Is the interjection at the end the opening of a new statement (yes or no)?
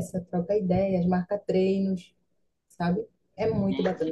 yes